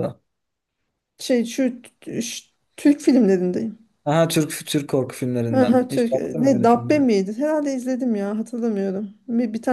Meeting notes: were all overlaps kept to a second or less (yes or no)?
no